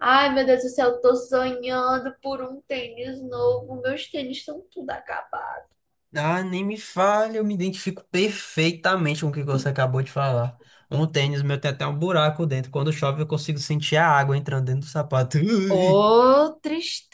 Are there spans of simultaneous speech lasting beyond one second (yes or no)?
no